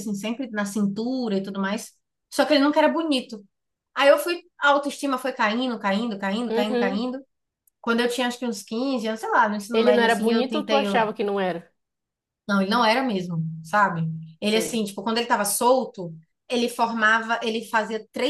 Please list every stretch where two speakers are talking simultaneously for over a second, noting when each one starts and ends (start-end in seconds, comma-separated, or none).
9.7-11.1